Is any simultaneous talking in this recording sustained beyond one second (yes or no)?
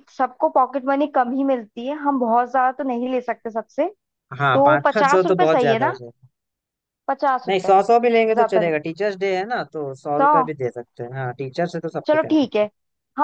yes